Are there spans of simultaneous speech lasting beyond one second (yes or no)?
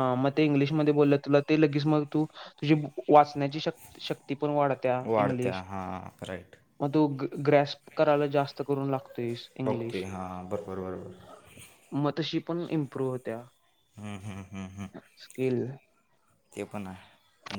no